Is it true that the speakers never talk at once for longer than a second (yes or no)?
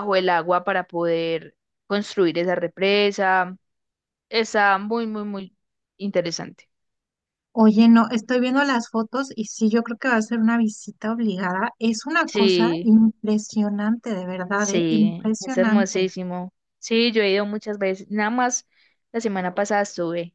no